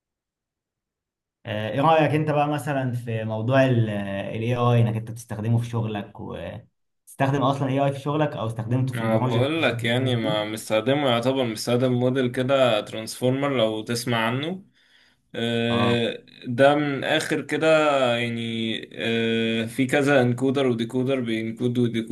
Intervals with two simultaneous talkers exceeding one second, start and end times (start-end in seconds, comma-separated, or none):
8.9-10.4